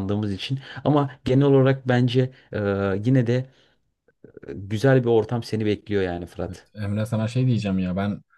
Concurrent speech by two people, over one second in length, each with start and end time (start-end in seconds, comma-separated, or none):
none